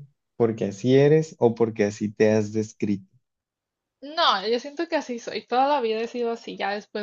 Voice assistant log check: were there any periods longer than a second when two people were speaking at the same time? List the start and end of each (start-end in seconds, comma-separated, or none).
none